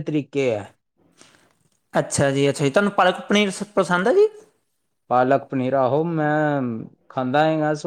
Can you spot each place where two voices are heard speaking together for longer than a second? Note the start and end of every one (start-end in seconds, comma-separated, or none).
none